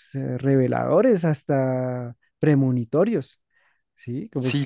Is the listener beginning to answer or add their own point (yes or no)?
yes